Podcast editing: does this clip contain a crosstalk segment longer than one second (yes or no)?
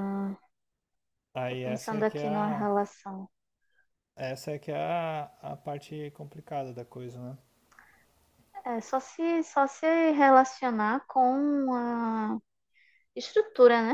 yes